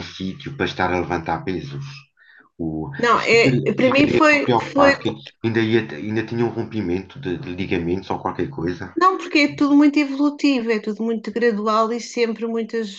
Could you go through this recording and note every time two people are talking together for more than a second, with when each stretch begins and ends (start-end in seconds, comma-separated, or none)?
3.0-4.9